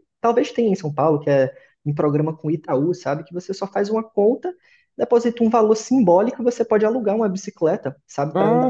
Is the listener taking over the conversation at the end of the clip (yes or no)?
no